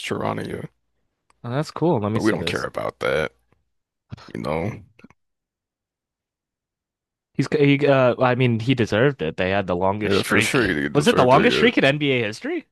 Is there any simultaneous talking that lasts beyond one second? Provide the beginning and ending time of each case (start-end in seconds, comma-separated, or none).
10.0-11.7